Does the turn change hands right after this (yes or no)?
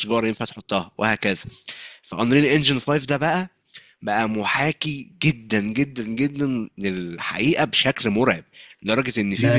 yes